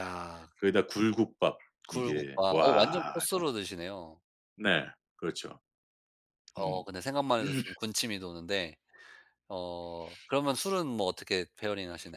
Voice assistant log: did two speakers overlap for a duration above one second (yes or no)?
yes